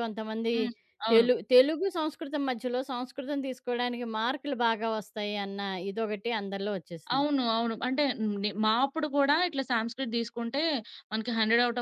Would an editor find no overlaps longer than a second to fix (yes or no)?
yes